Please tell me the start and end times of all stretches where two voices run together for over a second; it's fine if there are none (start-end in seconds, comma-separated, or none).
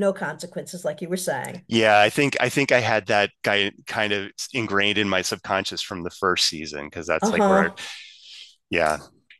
none